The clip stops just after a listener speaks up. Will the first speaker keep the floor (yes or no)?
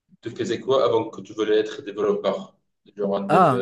no